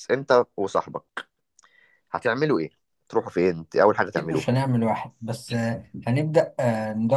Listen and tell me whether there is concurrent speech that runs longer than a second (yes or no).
no